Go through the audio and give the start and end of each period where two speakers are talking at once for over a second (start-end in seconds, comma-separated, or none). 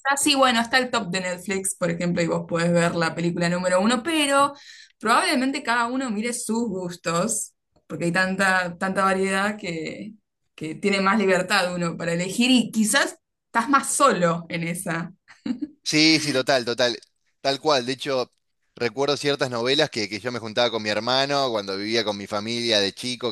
none